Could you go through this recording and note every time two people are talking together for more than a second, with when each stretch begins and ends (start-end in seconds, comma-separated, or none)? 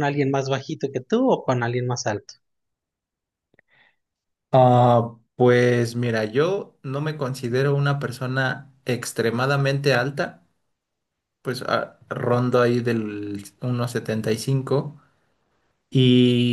none